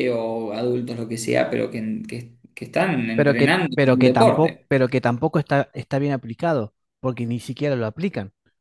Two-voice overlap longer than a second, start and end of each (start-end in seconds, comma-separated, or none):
3.1-4.7